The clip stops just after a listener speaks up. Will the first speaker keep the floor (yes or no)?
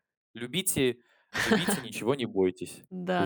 no